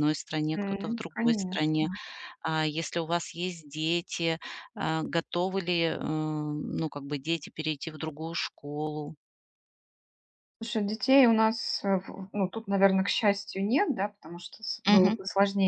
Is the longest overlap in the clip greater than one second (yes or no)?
yes